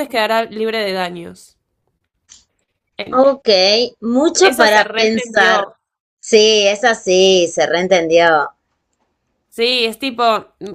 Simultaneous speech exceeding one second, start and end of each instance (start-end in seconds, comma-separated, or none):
4.4-5.7